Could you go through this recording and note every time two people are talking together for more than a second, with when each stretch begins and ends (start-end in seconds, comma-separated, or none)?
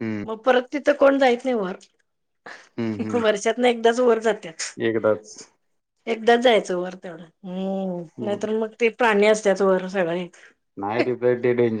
none